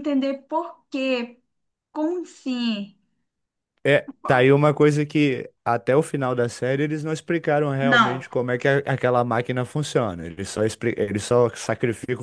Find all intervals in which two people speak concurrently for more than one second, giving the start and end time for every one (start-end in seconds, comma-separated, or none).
none